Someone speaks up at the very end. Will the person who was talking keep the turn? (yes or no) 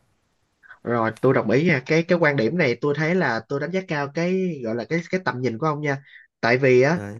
yes